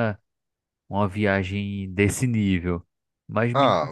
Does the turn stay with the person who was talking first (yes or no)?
yes